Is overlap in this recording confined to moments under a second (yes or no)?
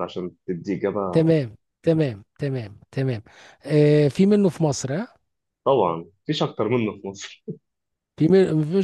yes